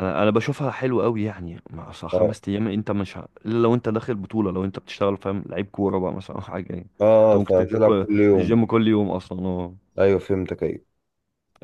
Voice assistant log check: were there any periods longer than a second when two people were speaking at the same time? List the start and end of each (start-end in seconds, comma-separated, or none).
7.2-8.6